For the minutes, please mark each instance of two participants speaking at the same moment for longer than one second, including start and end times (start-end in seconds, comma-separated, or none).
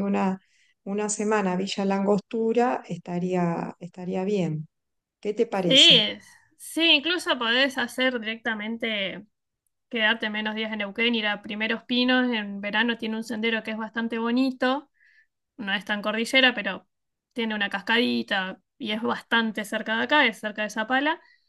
none